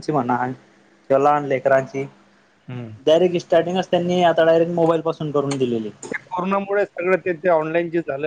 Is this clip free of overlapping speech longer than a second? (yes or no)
yes